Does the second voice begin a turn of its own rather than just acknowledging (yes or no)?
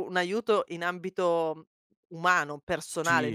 yes